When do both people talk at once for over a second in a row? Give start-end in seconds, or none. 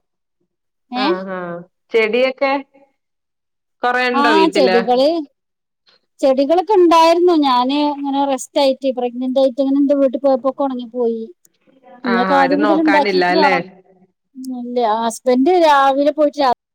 12.1-13.5